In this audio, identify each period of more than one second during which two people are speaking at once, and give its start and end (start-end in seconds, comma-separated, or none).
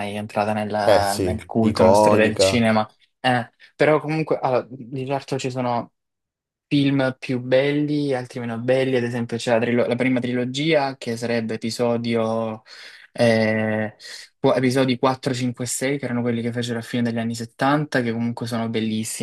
0.8-2.6